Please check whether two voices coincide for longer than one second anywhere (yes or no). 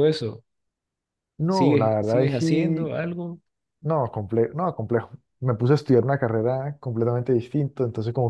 yes